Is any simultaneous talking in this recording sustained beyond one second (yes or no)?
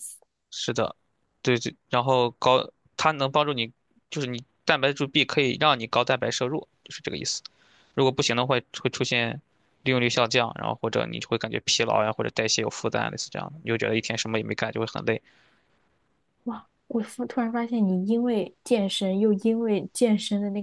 no